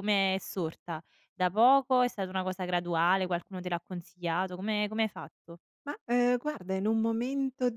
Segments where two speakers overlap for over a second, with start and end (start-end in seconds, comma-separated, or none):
none